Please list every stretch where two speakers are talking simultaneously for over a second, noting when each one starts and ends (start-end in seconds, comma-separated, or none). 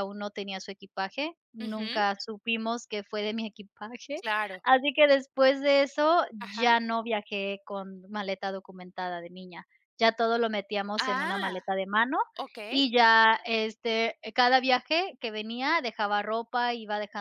none